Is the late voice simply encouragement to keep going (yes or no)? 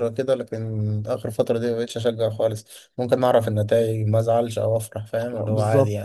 no